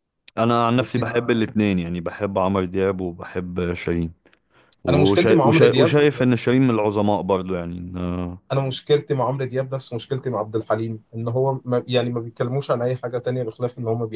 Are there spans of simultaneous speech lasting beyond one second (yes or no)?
yes